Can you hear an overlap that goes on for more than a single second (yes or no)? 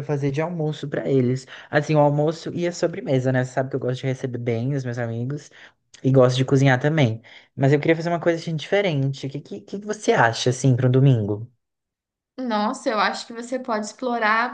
no